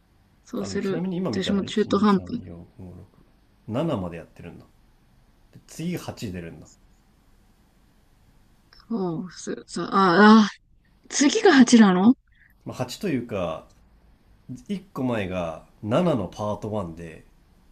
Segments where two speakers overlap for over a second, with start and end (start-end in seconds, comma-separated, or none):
0.6-2.4